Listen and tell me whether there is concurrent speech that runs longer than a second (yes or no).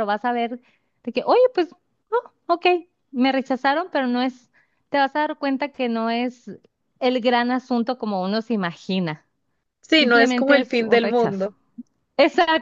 yes